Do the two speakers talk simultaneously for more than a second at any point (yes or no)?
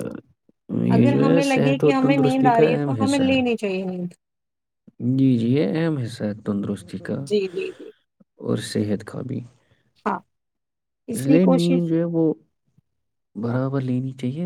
yes